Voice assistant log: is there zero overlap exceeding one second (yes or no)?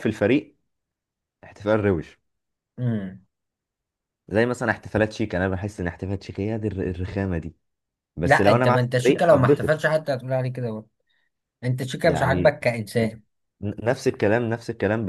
no